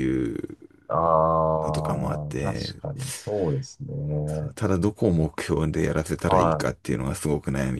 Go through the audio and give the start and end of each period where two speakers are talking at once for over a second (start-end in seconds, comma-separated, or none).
1.6-2.8